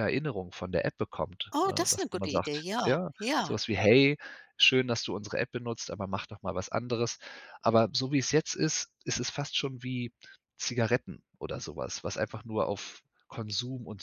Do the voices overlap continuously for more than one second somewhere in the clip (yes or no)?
yes